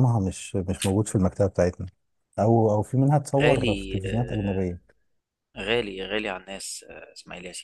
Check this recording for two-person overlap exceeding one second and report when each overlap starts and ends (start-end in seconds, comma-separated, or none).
3.4-4.8